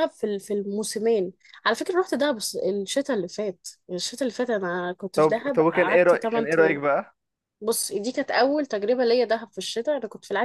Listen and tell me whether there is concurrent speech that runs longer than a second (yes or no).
yes